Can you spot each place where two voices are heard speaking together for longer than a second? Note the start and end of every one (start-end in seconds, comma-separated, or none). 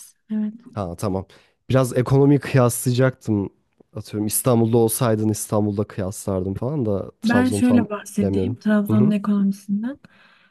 7.2-9.1